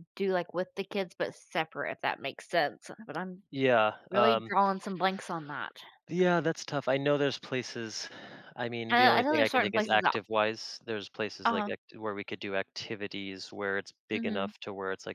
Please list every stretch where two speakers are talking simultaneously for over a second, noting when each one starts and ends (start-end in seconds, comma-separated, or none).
8.9-10.1